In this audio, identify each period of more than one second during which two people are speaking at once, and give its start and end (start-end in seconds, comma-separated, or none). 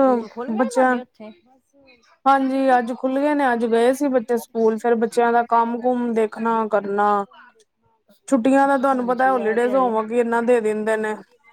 8.6-10.0